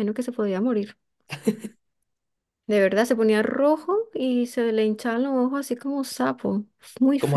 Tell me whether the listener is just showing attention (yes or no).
no